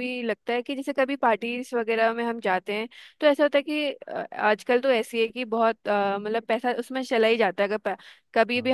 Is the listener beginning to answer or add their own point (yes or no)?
no